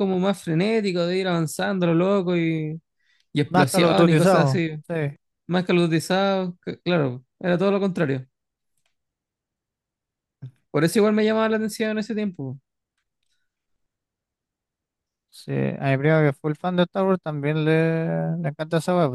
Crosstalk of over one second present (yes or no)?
yes